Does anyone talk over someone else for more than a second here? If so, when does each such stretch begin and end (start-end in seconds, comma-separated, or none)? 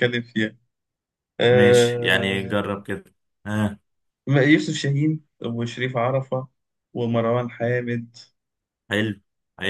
1.5-2.7